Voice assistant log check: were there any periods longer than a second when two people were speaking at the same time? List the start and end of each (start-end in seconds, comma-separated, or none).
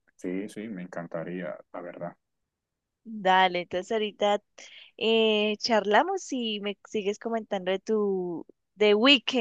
none